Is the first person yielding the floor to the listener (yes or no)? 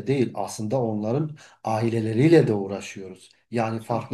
no